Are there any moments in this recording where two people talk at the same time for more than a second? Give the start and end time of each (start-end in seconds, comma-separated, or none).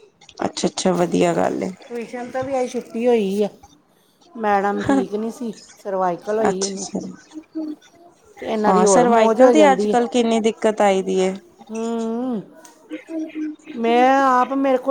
none